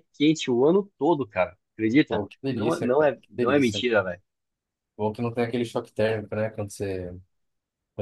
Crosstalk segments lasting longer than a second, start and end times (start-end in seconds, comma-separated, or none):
2.1-3.8